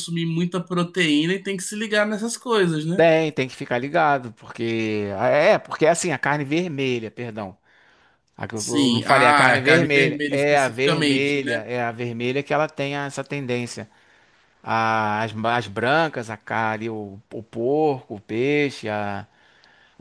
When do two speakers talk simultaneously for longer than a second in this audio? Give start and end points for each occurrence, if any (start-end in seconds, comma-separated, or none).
8.5-11.6